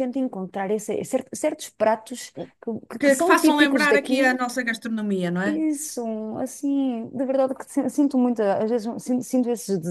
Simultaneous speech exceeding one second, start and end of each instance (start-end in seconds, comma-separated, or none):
3.0-4.3